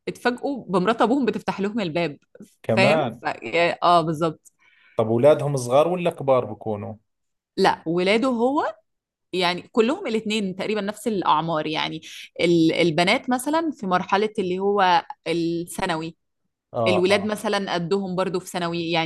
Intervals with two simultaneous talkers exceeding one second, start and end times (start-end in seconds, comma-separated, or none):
none